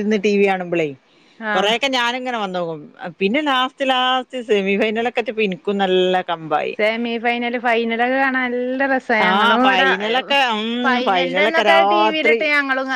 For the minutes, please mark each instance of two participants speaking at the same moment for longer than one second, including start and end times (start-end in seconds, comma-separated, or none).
11.1-12.4